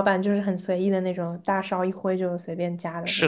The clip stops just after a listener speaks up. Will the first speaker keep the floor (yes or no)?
no